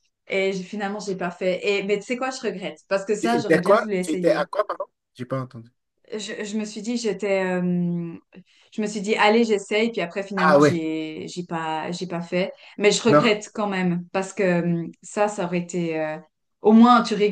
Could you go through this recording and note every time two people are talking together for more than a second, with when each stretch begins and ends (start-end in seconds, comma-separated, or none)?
3.2-4.5